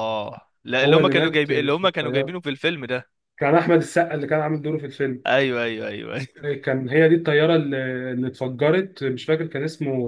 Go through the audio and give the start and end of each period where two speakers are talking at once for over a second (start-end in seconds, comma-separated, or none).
0.8-2.4